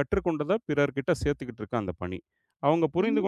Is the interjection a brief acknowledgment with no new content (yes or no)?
yes